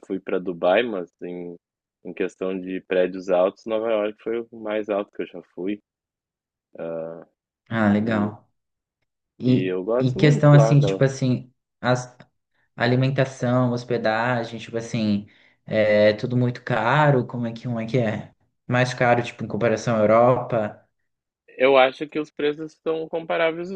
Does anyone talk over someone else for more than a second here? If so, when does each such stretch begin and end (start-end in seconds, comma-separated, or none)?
9.4-11.0